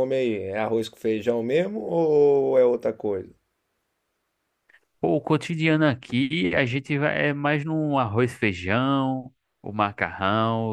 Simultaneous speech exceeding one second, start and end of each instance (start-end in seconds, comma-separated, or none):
none